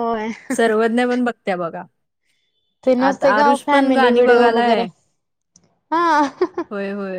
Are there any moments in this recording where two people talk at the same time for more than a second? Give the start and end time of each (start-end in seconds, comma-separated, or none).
3.1-4.8